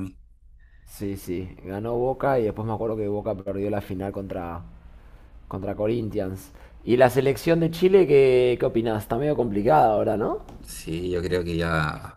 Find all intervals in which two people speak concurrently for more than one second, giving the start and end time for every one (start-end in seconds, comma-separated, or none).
none